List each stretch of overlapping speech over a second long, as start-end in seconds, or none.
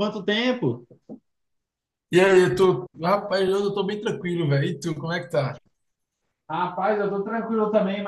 none